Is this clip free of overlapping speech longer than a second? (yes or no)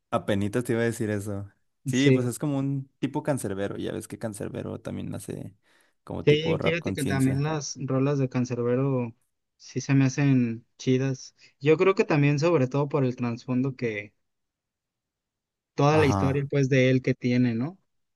no